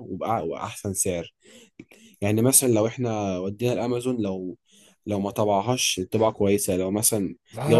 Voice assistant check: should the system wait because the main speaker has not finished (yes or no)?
no